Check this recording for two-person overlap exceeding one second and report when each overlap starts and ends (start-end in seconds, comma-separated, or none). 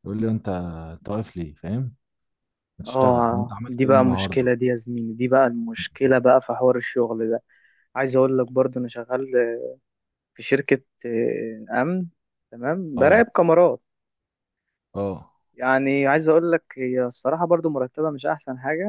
2.9-4.5